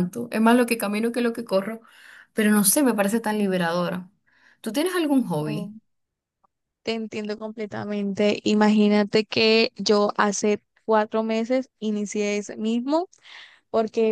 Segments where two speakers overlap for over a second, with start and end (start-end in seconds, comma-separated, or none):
none